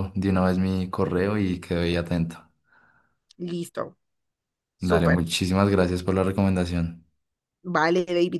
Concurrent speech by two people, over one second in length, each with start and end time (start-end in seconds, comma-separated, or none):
none